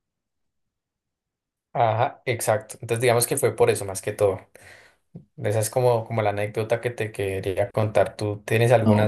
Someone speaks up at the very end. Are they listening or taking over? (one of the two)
taking over